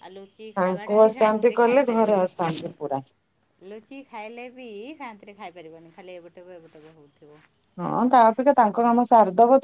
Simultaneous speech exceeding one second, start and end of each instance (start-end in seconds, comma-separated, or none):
0.6-2.3